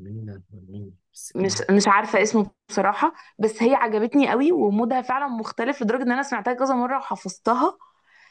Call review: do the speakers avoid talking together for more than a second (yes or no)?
yes